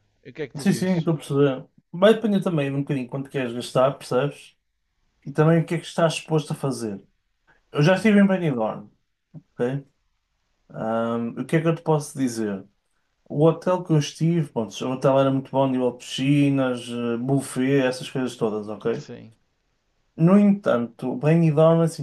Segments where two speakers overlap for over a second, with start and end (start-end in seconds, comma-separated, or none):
none